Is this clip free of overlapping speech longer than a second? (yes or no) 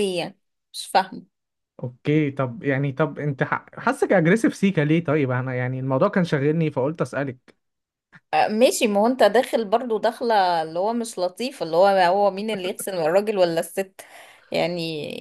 yes